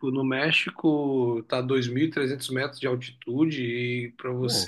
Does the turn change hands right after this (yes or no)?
no